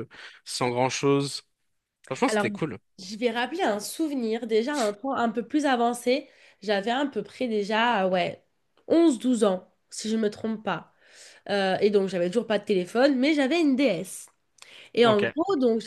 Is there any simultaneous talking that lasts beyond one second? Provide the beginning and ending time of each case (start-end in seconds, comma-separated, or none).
none